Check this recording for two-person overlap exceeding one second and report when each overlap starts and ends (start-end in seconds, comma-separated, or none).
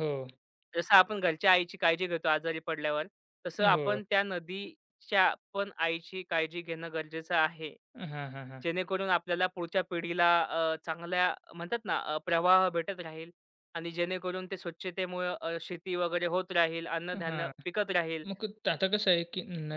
none